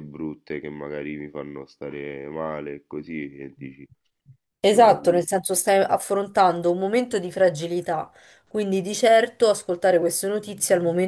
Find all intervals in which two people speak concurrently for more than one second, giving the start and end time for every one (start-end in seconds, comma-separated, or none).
none